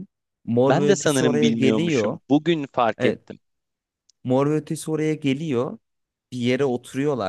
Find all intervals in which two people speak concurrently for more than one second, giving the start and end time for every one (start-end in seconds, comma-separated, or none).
0.7-2.2